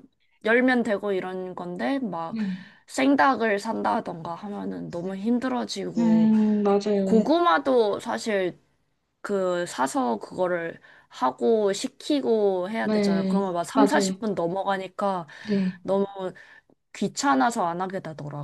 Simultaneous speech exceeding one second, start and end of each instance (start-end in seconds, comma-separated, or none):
12.8-14.2